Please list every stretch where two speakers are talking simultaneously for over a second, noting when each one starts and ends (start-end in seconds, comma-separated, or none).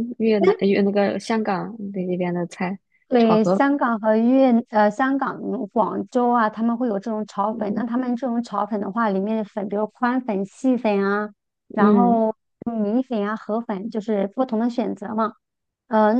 none